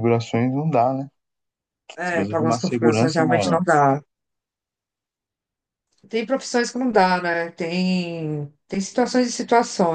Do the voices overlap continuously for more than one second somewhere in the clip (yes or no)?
yes